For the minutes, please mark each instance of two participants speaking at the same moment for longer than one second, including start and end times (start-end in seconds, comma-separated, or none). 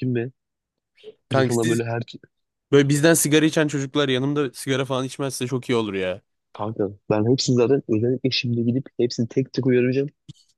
none